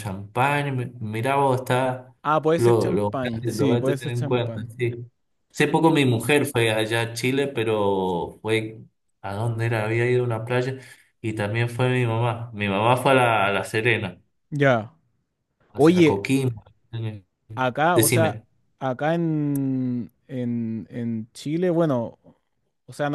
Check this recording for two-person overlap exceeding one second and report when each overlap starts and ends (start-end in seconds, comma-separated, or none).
2.6-4.7